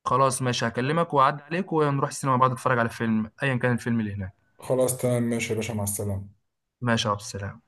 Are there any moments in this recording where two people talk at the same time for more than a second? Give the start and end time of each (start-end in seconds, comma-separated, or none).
none